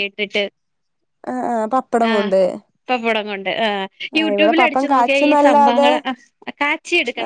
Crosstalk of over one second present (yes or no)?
yes